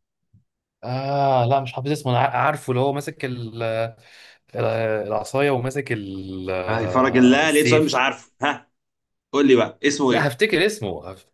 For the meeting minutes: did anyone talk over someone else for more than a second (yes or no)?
yes